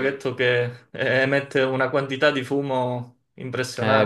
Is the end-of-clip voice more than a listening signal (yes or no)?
yes